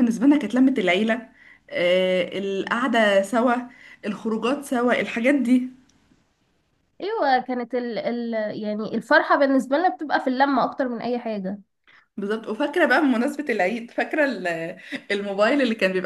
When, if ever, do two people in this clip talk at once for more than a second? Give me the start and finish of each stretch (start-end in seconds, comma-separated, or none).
none